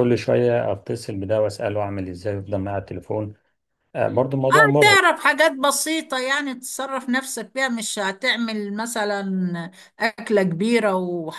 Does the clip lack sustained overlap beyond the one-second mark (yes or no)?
yes